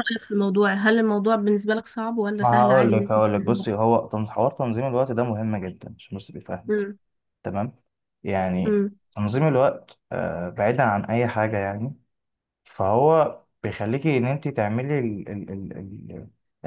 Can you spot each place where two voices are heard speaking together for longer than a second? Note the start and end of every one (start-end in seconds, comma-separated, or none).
2.4-3.7